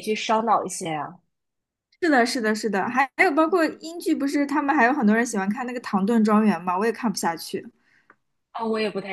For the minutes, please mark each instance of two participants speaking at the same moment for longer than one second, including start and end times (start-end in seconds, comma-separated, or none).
none